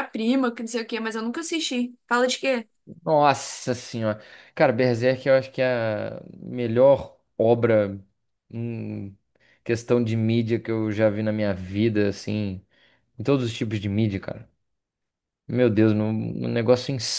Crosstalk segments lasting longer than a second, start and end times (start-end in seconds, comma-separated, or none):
none